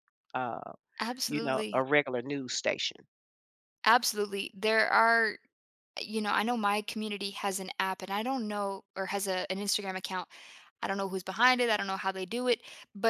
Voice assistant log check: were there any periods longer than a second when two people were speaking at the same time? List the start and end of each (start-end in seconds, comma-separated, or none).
none